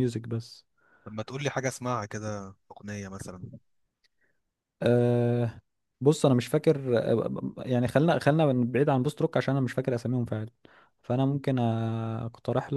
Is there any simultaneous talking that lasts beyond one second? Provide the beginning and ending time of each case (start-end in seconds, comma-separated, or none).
none